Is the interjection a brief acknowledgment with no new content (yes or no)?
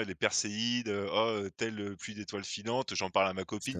yes